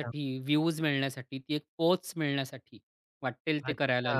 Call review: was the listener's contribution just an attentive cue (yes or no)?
no